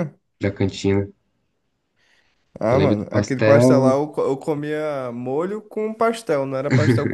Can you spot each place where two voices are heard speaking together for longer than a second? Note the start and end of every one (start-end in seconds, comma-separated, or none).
2.7-4.0